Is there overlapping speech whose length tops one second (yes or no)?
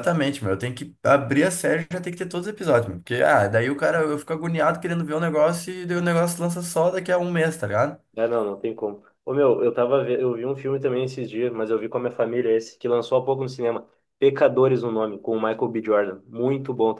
no